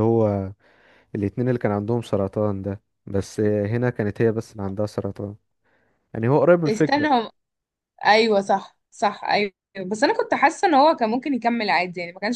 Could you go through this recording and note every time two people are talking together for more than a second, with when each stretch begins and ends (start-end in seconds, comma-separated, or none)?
none